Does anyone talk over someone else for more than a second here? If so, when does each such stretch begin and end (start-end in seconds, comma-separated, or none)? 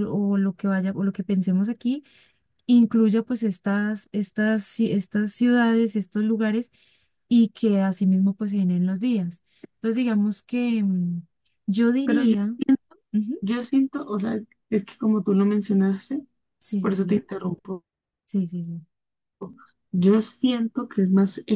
none